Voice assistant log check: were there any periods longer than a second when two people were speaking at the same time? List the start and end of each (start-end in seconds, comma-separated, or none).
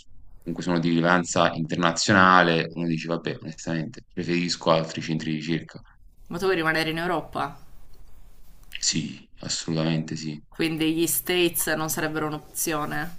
none